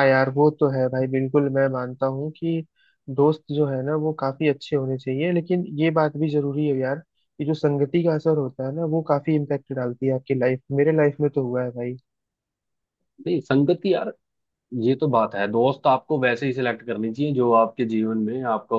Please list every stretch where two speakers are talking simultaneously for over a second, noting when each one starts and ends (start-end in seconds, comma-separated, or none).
none